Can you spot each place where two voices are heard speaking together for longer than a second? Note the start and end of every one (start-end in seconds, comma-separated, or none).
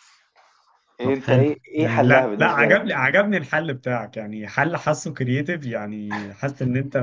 1.0-3.0